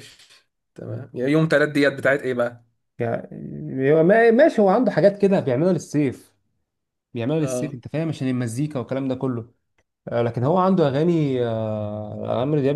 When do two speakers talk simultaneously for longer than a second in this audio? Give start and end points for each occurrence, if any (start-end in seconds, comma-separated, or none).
none